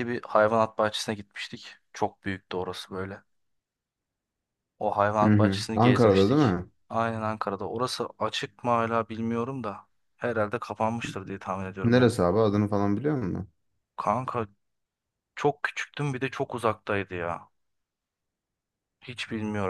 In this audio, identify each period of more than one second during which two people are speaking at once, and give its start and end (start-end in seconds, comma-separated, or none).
5.2-6.5